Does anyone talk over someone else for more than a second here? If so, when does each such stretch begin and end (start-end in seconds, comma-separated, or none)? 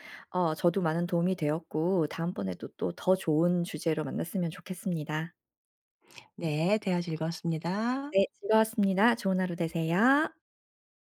none